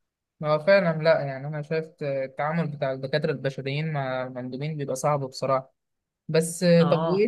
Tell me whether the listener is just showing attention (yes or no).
yes